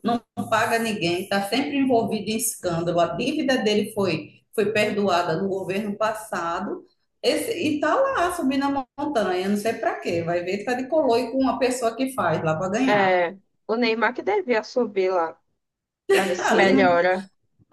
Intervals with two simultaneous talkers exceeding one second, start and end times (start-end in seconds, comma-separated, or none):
none